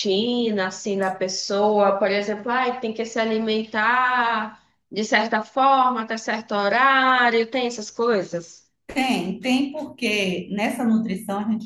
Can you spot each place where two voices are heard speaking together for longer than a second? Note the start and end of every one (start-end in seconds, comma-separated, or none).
none